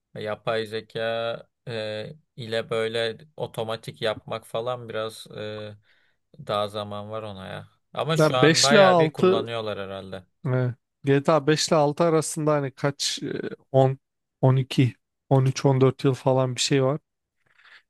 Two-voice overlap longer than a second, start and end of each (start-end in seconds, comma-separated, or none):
8.2-9.4